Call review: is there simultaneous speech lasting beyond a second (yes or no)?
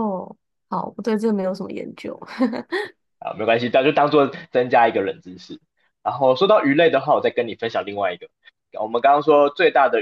no